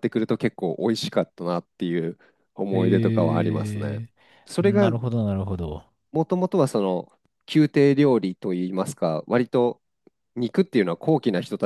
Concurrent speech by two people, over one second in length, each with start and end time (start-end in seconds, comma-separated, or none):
2.7-4.0